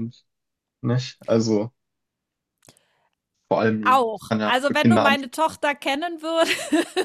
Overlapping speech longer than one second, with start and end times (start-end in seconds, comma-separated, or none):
3.8-5.4